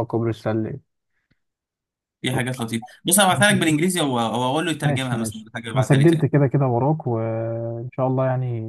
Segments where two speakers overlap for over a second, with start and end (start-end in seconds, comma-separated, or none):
4.8-6.3